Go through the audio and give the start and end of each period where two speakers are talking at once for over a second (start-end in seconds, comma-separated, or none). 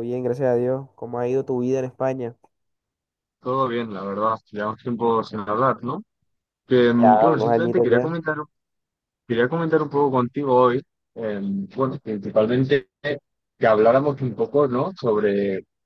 6.8-8.1